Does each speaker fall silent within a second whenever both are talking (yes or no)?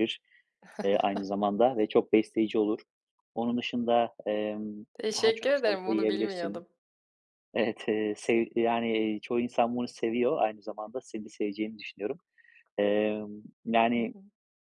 no